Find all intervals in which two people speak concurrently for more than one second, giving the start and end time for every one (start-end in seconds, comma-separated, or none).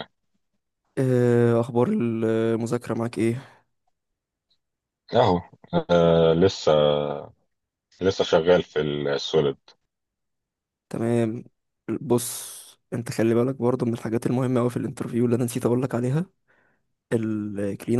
none